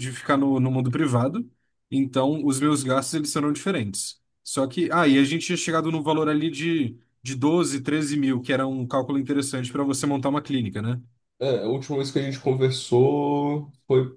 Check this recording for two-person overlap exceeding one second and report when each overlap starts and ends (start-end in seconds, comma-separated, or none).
none